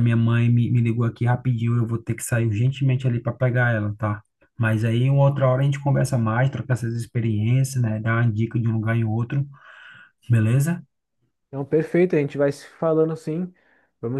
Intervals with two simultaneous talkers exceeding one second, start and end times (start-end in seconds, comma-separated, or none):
none